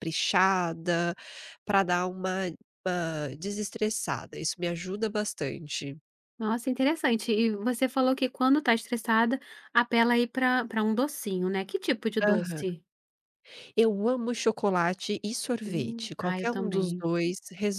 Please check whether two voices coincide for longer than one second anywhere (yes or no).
yes